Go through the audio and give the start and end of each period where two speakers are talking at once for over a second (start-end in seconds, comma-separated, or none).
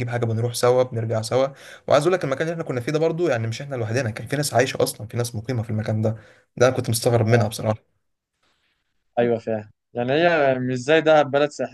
none